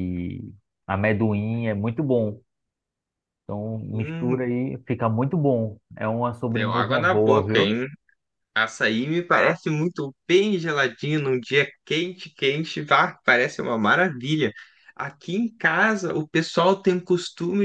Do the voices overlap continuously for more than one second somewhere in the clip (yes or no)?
yes